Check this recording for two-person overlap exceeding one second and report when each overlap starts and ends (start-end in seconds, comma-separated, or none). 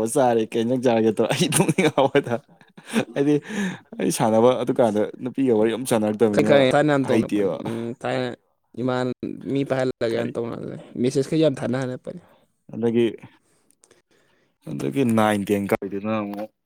none